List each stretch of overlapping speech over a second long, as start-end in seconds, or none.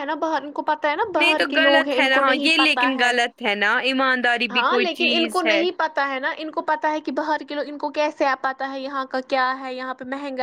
1.2-3.1